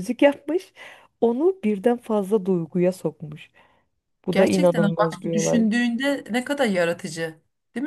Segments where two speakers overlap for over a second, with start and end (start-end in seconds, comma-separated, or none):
4.3-5.7